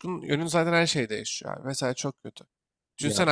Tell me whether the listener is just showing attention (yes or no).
yes